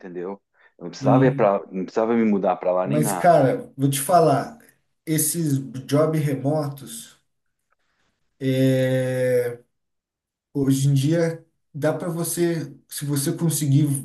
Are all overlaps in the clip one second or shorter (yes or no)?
yes